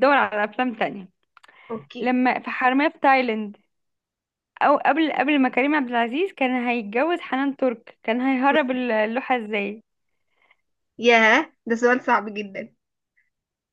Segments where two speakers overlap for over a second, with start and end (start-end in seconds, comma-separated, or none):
none